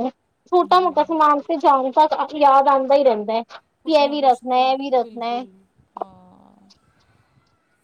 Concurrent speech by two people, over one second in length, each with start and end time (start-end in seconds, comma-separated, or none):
none